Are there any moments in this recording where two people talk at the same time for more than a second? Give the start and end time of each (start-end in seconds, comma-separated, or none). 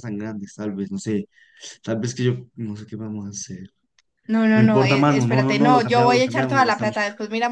4.5-7.0